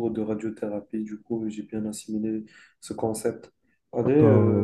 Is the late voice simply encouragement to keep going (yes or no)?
no